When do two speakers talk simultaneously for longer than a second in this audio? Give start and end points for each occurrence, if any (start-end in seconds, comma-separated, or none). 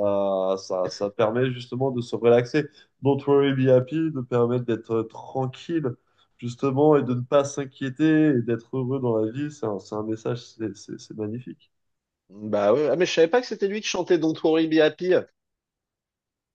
none